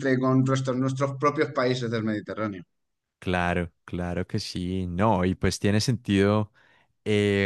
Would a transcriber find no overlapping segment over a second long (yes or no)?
yes